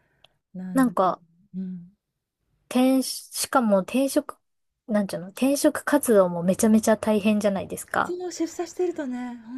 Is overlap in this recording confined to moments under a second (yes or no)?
yes